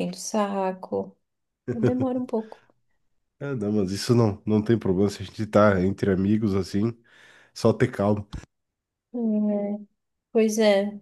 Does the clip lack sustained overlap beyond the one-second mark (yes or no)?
yes